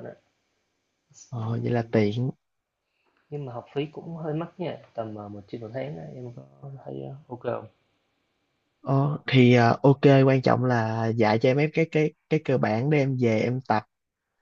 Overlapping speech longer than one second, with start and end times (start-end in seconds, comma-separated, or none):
none